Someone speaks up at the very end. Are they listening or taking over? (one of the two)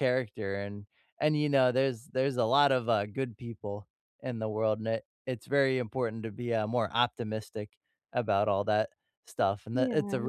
listening